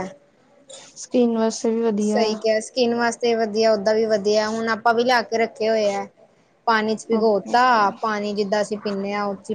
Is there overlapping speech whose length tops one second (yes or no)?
no